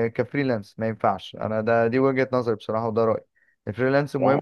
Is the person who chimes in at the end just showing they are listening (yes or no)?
yes